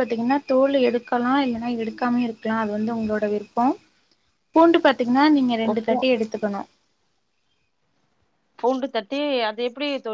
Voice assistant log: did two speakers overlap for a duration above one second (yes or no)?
no